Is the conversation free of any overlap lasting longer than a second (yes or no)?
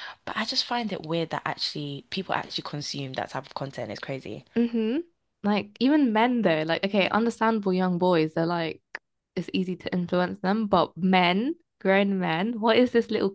yes